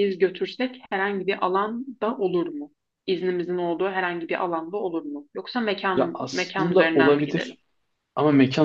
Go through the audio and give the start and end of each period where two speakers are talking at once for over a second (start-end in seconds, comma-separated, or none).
5.9-7.6